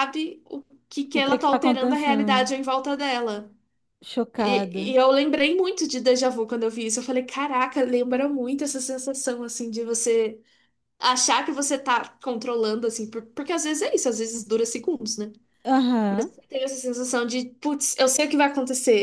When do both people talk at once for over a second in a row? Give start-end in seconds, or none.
1.1-2.5